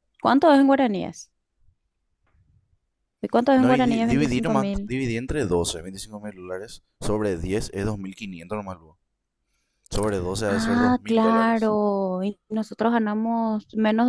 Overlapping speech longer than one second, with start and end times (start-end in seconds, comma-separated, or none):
3.6-4.9, 10.5-11.7